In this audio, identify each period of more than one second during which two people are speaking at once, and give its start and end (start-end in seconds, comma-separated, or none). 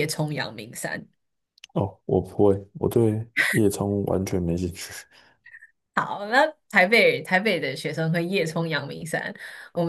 none